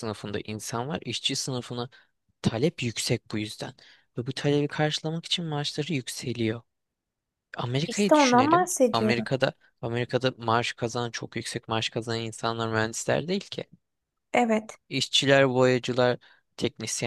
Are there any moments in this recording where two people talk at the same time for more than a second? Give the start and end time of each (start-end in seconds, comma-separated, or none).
7.9-9.3